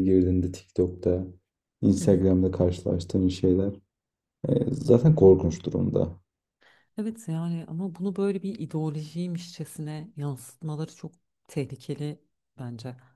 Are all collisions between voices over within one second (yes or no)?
yes